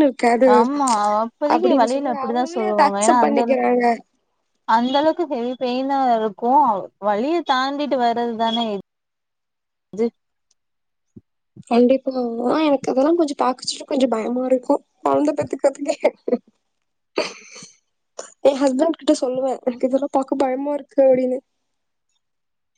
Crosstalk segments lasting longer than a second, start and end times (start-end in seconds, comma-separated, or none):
1.5-3.6